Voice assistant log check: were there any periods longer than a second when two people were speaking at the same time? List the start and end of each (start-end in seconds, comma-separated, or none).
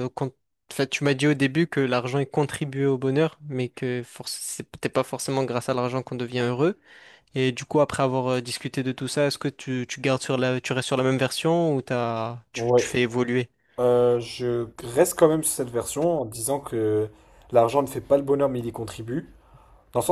none